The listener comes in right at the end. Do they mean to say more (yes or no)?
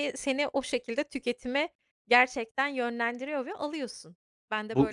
yes